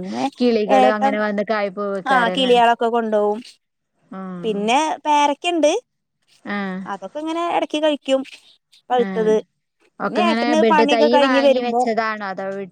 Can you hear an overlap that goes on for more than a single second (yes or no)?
yes